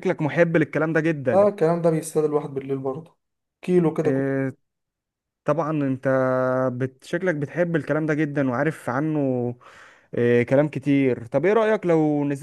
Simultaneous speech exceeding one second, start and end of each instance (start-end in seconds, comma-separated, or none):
none